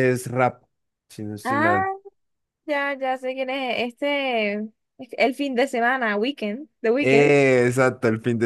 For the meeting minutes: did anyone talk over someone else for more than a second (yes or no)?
no